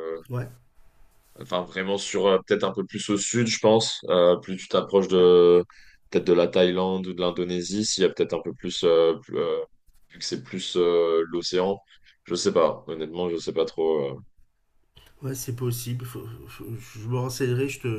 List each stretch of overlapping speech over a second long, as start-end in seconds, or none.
none